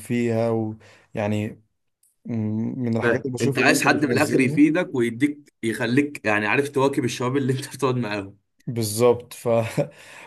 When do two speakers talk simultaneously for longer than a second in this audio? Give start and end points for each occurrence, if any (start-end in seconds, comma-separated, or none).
3.0-4.6